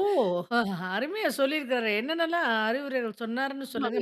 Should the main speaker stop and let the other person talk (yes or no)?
yes